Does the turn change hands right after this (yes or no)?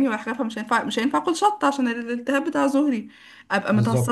no